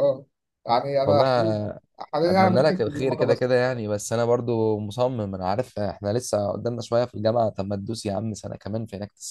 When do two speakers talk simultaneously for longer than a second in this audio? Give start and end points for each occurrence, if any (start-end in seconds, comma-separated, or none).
2.2-3.5